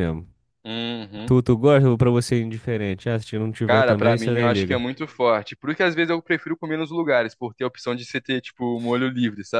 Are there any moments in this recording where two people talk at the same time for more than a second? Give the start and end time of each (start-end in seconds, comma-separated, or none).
3.6-4.8